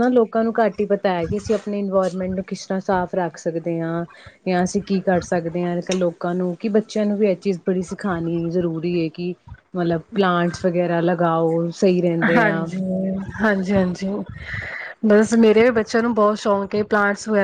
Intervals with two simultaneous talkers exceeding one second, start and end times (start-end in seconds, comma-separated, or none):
none